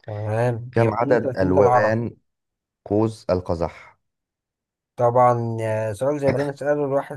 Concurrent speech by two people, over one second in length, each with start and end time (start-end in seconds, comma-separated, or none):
0.7-2.0